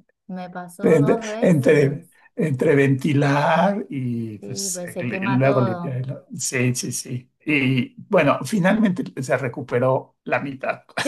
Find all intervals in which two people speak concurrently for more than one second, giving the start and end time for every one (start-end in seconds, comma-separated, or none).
0.8-2.1, 4.4-6.0